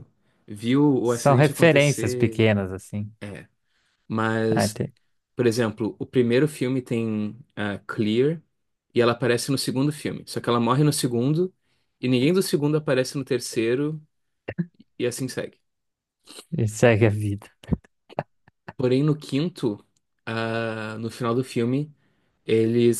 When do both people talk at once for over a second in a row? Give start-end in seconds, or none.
1.0-2.5